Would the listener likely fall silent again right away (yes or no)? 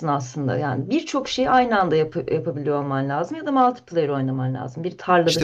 no